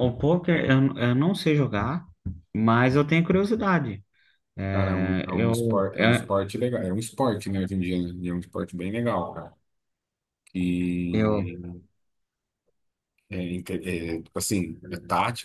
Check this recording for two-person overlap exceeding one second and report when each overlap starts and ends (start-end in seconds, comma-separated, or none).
4.7-6.3